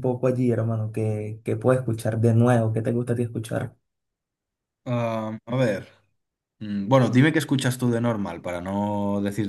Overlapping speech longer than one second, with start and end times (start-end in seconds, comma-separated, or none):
none